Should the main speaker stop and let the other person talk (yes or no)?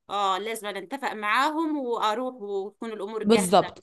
yes